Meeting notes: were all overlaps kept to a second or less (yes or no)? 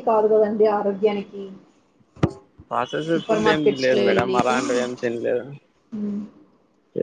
no